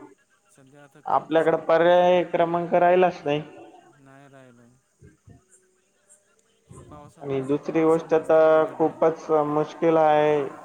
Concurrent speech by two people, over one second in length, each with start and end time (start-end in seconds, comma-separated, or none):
7.2-9.0